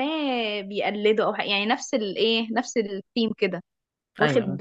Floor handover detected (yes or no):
no